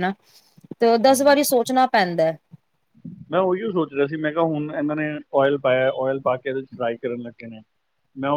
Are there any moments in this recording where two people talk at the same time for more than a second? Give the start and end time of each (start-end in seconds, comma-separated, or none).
none